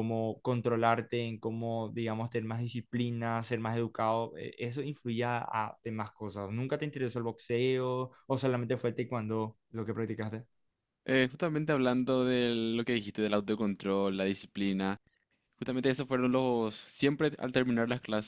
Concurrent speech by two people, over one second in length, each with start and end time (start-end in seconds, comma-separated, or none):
none